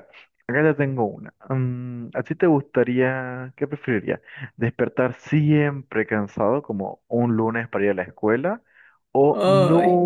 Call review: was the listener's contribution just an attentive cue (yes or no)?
yes